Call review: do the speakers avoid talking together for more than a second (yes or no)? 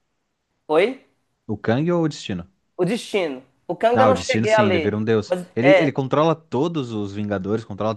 no